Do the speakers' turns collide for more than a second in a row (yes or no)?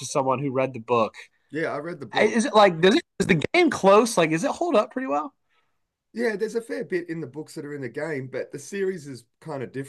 no